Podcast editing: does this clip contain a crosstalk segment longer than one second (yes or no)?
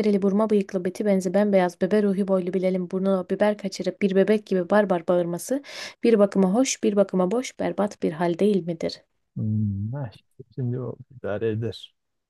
no